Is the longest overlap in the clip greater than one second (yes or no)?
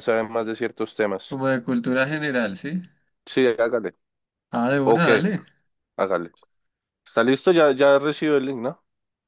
no